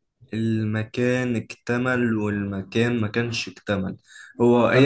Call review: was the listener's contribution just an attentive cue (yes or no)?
yes